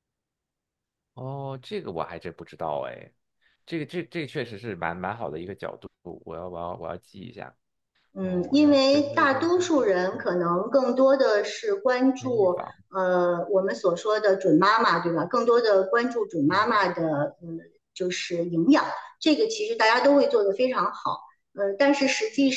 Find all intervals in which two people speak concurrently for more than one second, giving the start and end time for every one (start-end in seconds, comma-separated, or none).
8.2-10.2